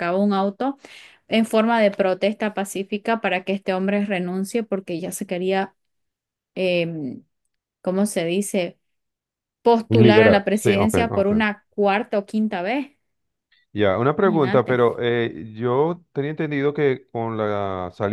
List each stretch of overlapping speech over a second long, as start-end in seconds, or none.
9.9-11.3